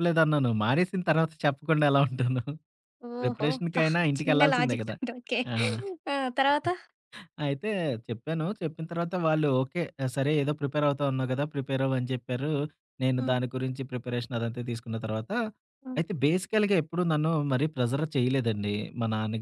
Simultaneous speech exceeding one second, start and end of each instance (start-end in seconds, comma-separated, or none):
3.2-5.0